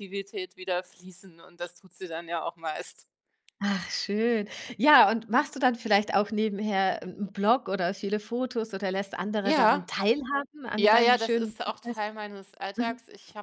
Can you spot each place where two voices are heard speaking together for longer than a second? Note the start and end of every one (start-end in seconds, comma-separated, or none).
10.8-12.1